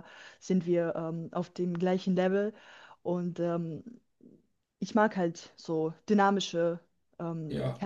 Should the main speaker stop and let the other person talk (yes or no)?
yes